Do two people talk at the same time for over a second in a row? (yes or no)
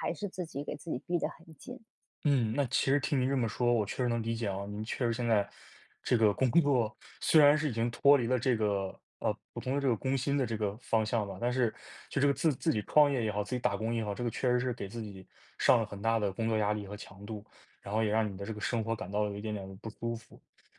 no